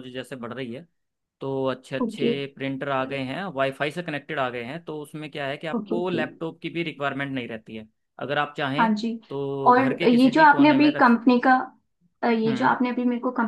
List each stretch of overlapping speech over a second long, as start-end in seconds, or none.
9.7-11.2